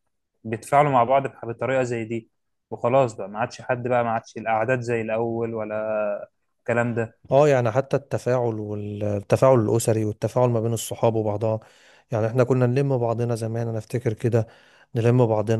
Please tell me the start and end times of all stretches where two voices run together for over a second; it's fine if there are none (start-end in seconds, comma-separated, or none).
none